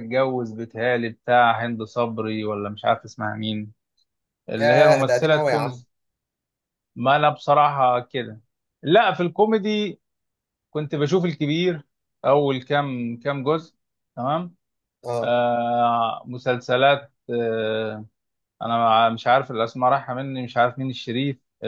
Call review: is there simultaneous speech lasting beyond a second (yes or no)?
yes